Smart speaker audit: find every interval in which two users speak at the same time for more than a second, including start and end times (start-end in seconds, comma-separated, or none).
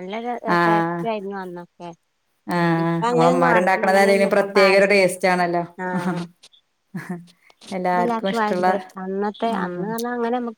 2.8-5.1